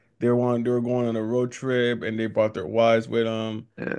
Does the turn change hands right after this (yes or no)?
no